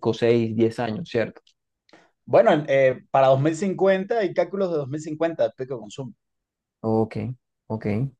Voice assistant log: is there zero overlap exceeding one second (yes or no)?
yes